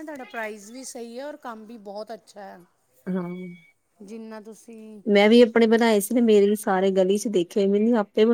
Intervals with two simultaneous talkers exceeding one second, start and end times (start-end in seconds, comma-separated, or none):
none